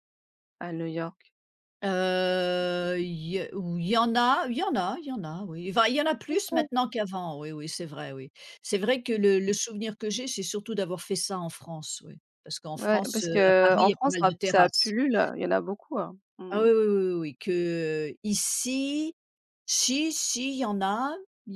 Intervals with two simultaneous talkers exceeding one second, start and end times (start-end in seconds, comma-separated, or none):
12.7-14.9